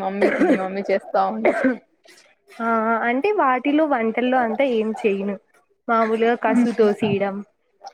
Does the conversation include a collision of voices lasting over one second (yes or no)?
no